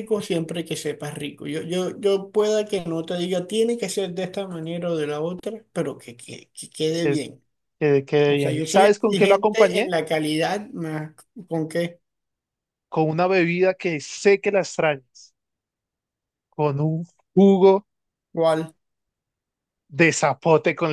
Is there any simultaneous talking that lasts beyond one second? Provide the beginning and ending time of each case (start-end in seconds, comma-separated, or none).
8.3-9.9